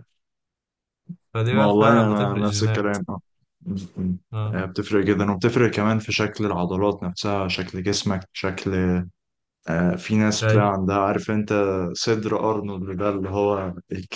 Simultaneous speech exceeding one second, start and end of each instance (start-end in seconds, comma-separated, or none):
1.5-3.0